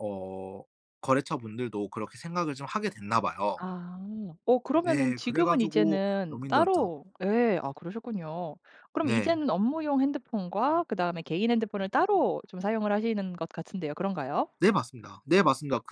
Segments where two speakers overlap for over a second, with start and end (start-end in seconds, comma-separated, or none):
4.8-6.9